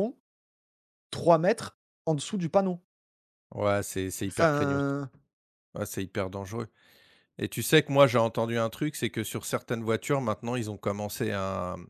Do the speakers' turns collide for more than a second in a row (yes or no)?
no